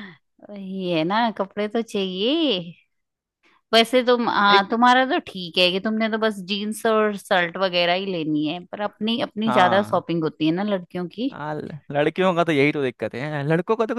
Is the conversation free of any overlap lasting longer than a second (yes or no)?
yes